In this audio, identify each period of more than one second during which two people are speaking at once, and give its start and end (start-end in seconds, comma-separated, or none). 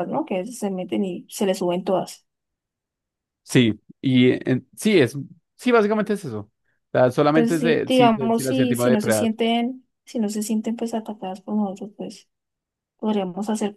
7.3-9.3